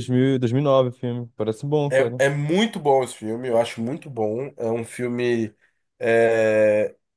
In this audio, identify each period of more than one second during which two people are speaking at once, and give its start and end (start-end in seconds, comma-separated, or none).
none